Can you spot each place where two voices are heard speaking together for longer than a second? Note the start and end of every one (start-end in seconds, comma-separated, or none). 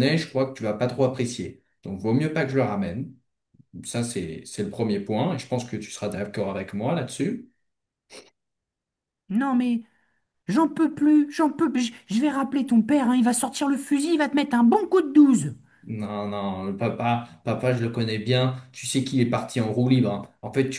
none